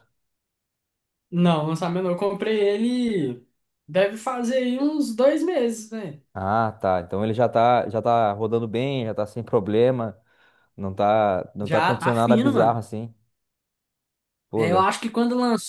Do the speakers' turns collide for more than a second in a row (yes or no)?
yes